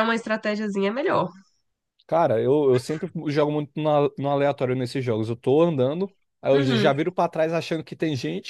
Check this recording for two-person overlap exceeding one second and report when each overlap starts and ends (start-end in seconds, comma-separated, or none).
none